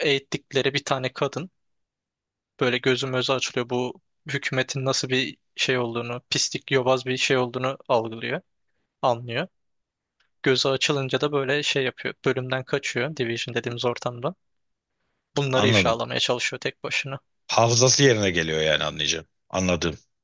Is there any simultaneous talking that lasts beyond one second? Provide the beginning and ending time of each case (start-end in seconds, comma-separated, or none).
none